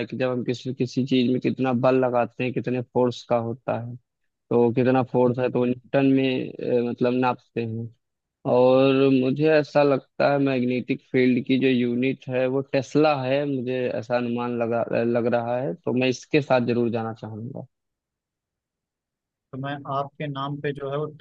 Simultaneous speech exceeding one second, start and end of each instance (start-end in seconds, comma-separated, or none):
none